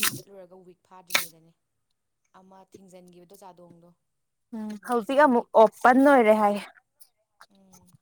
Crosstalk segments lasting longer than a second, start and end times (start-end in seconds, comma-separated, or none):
4.8-6.2